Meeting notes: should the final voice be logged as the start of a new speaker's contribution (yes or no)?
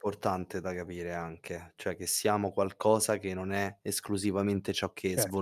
yes